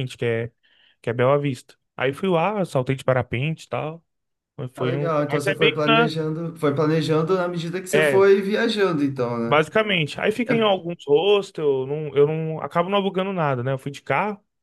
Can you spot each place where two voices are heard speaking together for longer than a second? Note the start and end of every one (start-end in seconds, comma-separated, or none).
4.8-6.1